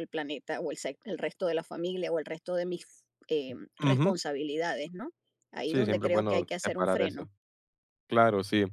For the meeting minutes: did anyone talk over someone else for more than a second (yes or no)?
yes